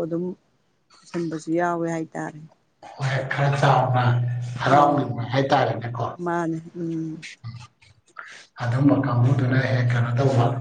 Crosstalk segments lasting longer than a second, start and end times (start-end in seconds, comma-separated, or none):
none